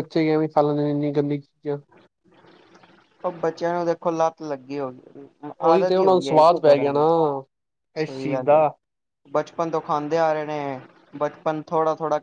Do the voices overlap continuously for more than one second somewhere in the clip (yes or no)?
yes